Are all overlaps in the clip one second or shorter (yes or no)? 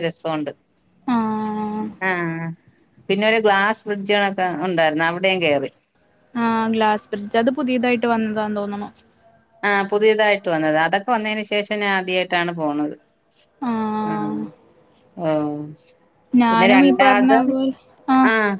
yes